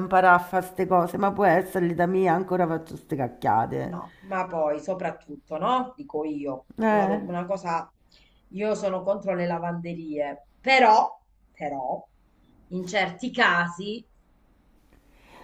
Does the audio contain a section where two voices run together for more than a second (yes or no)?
no